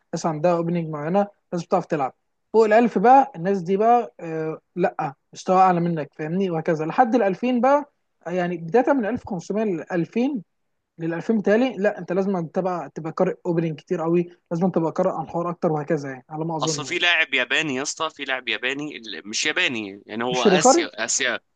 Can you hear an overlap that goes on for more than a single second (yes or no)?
no